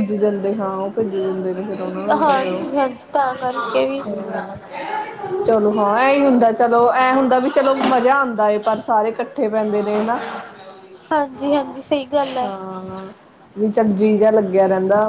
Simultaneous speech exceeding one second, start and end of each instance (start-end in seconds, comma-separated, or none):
none